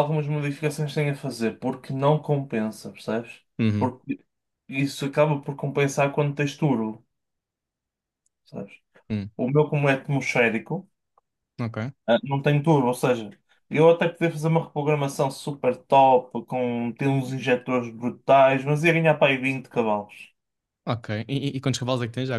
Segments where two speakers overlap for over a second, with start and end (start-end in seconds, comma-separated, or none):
none